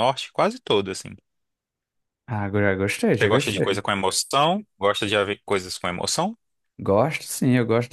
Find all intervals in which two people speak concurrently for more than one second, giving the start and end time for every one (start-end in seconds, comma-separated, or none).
none